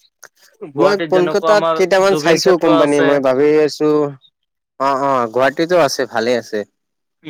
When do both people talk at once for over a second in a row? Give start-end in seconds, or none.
0.8-3.1